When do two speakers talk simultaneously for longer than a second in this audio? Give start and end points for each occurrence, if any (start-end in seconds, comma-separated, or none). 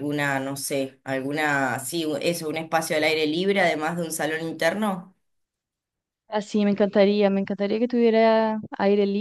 none